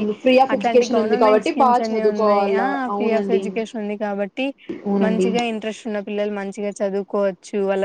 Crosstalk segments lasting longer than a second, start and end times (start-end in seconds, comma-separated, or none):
0.5-3.4